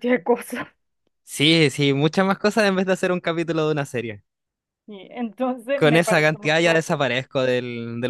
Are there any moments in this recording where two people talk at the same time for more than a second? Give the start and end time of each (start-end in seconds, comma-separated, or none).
5.7-7.0